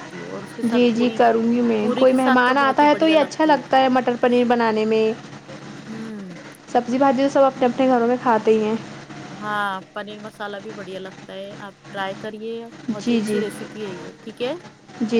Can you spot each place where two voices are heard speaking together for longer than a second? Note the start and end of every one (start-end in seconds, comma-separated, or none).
1.8-3.6